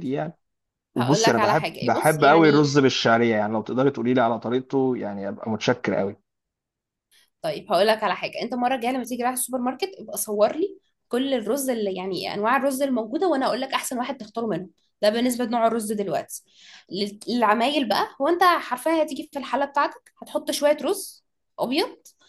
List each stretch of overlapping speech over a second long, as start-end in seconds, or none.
1.0-2.7